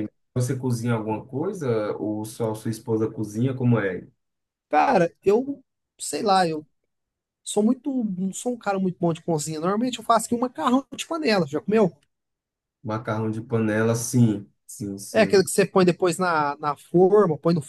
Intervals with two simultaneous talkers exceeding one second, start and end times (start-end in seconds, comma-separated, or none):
none